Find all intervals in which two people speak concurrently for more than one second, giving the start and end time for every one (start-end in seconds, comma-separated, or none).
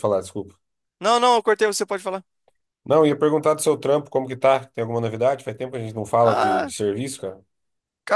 none